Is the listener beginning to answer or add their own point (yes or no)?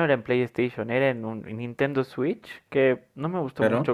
no